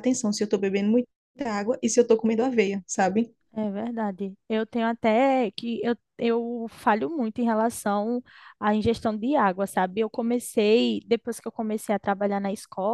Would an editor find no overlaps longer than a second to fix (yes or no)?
yes